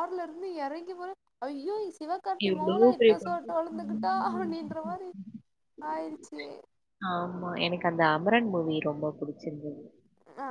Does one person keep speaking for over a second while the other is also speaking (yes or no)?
yes